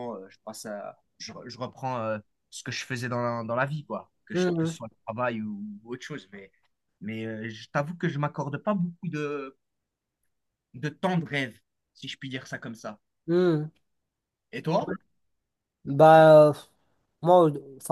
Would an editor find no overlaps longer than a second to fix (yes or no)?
yes